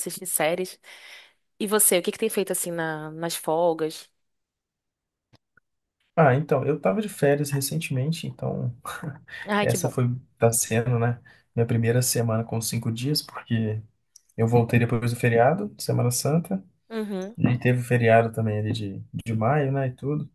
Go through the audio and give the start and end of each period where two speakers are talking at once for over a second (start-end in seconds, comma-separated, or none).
none